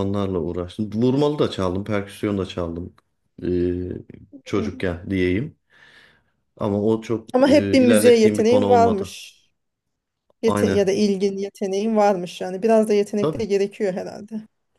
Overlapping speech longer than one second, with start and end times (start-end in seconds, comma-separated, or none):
7.3-9.1